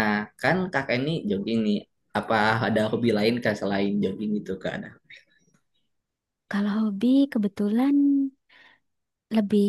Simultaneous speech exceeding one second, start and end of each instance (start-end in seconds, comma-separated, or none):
none